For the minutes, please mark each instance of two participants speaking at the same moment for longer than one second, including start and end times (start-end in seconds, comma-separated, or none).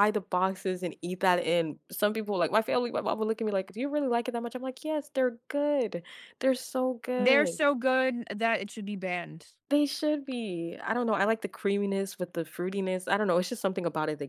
none